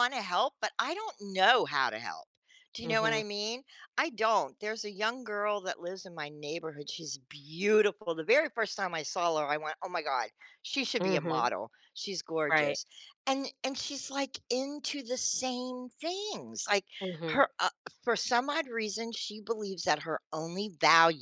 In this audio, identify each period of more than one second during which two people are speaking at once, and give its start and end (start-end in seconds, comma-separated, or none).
none